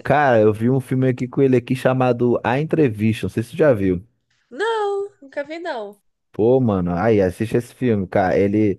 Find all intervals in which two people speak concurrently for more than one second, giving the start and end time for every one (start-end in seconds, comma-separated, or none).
none